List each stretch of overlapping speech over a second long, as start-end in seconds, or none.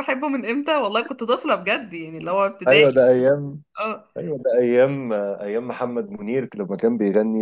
none